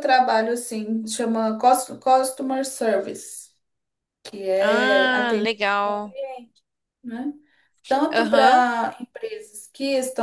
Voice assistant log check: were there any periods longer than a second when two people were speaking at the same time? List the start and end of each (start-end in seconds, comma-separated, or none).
4.6-6.2